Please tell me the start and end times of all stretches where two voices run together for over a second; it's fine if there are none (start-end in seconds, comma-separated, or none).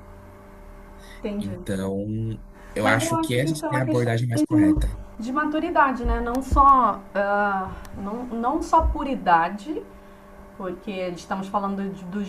2.8-4.1